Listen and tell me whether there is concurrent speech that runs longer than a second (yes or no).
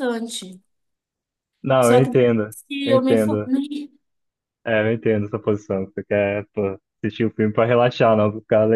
yes